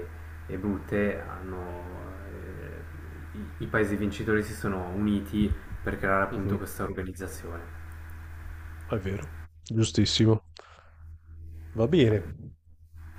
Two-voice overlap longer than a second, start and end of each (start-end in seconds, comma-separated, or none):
none